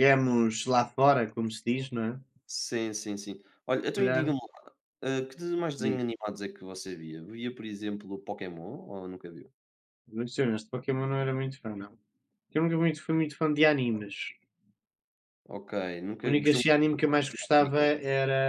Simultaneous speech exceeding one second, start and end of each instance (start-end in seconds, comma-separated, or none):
16.2-17.8